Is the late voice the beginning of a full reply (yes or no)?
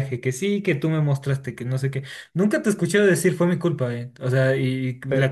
yes